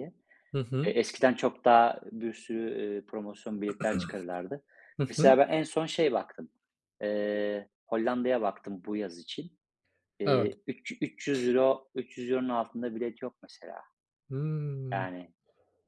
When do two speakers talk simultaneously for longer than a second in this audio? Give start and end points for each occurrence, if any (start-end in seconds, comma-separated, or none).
none